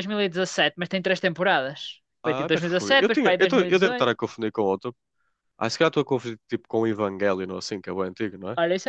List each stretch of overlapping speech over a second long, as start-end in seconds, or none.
2.2-4.1